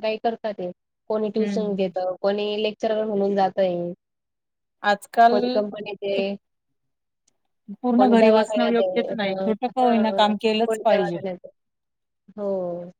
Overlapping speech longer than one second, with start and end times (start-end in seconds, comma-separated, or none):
8.0-11.2